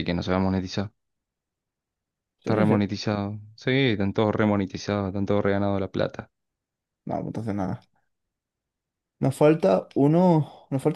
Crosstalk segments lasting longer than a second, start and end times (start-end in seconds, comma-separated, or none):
none